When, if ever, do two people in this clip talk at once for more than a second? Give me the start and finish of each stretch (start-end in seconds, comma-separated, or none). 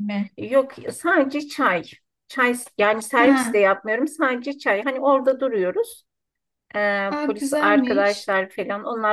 7.1-8.3